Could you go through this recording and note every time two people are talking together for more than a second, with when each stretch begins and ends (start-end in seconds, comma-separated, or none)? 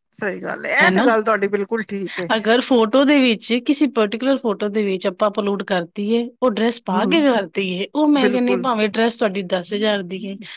none